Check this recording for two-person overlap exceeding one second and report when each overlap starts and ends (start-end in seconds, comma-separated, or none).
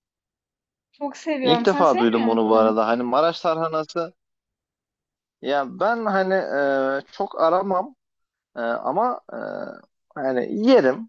1.4-2.7